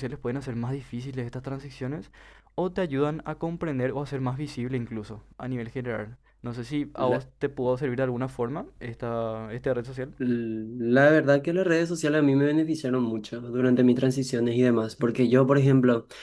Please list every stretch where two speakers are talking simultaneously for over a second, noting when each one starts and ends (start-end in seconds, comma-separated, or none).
none